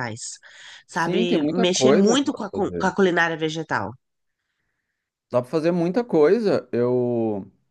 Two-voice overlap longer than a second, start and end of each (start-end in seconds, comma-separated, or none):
0.9-2.9